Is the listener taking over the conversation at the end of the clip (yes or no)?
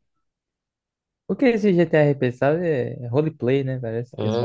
yes